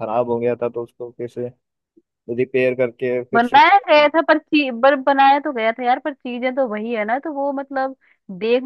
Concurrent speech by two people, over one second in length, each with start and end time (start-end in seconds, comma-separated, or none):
none